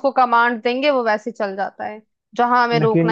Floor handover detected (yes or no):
no